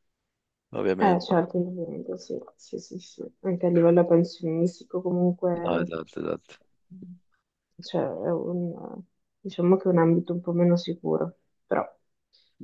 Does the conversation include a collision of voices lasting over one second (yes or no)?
no